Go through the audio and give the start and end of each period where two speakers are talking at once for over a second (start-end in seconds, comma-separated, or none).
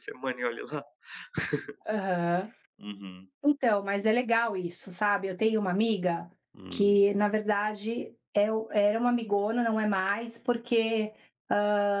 none